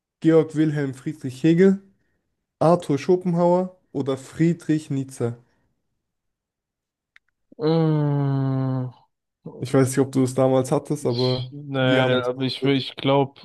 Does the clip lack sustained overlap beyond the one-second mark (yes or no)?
no